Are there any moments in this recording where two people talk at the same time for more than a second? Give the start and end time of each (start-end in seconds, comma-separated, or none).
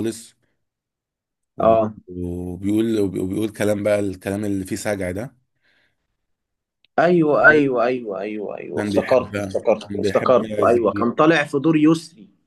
8.8-11.1